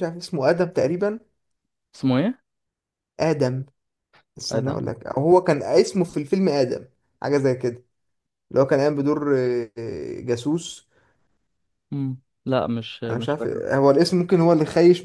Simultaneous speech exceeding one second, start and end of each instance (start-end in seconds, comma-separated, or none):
none